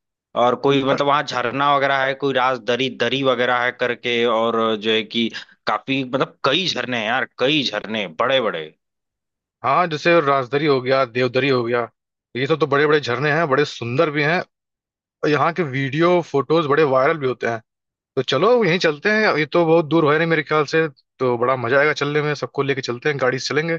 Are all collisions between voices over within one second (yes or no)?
yes